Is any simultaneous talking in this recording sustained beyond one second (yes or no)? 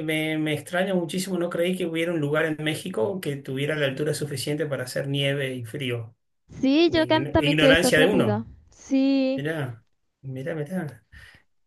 yes